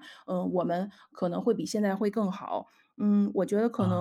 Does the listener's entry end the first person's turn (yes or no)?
no